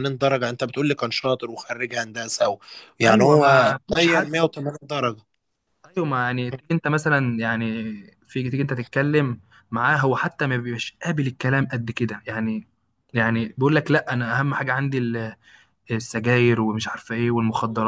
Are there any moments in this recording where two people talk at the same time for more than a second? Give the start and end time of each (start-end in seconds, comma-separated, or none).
3.0-4.5